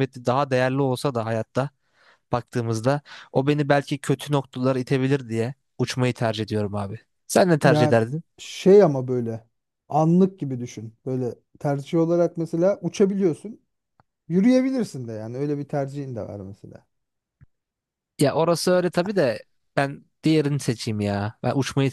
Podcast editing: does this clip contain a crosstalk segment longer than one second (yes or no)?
no